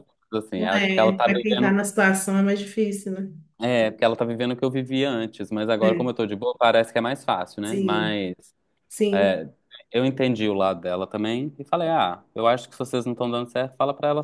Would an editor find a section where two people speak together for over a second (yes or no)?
yes